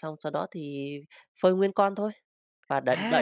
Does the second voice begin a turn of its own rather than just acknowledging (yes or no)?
yes